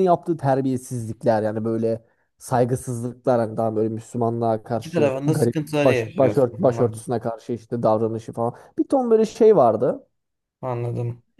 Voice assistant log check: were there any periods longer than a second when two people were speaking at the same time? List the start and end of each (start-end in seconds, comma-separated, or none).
4.7-7.1